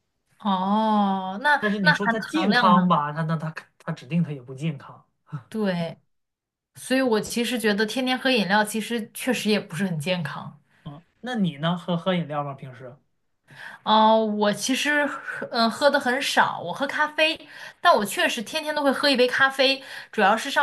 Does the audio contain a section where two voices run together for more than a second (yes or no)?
yes